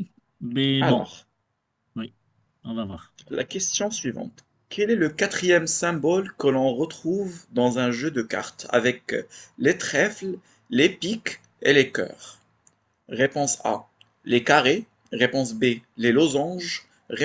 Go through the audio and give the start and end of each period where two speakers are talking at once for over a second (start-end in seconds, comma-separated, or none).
none